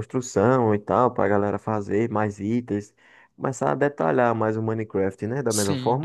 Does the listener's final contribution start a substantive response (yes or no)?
yes